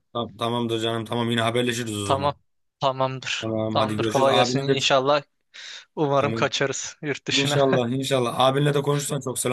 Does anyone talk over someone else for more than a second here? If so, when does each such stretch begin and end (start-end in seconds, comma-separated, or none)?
3.4-4.8